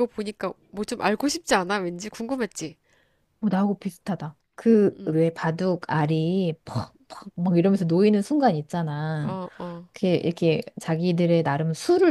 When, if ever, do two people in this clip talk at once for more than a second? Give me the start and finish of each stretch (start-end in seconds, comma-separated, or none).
none